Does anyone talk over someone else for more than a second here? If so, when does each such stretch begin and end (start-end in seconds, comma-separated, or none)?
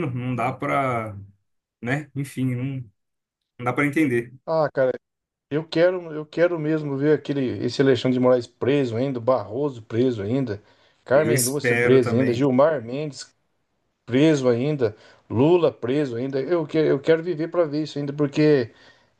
11.1-12.5